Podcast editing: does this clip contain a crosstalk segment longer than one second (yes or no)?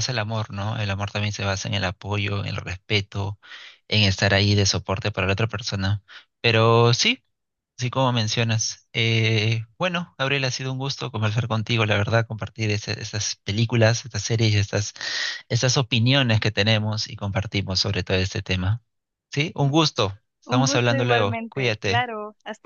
yes